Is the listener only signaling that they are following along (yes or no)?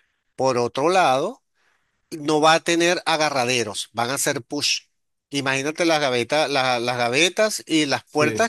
yes